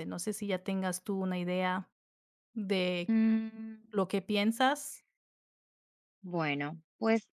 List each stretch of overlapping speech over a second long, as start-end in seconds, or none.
none